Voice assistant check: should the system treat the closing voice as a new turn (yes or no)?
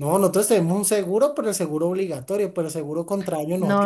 yes